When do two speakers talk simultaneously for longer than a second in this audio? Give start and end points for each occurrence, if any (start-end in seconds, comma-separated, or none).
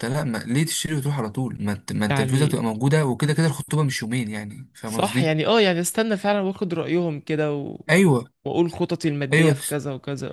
none